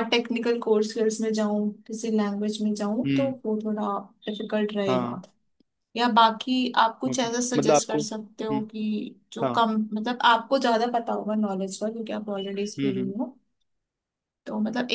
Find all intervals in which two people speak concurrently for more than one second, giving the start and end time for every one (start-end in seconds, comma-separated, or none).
7.1-8.6